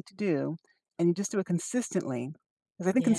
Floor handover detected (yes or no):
no